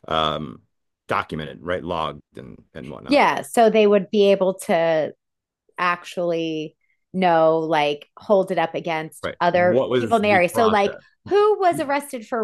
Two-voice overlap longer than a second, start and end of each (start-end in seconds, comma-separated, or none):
9.2-11.0